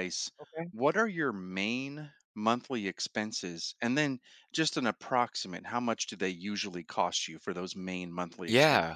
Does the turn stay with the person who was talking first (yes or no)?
no